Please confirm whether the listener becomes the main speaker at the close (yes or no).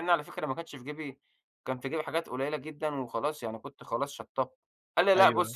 yes